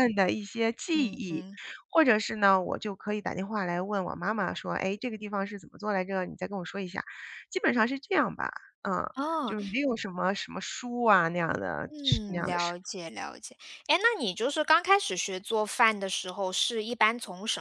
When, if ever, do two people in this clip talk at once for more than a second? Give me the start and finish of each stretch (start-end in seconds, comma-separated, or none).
none